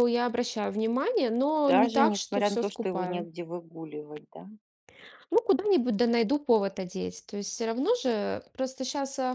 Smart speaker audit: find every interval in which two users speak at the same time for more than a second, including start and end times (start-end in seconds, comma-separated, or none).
1.7-3.3